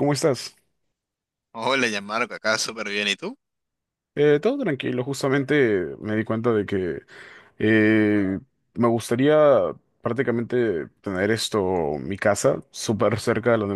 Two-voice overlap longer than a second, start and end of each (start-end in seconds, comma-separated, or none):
none